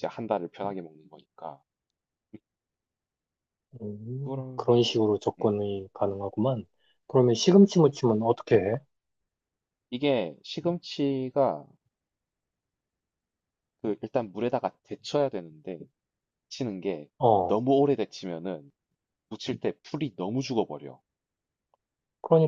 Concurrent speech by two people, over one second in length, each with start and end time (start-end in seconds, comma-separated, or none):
none